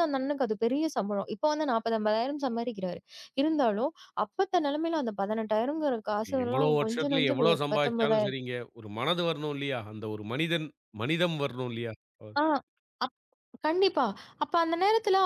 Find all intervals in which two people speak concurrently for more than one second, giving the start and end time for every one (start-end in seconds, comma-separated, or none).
6.4-8.4